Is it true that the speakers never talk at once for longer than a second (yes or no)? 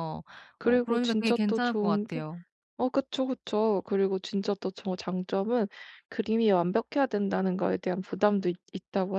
no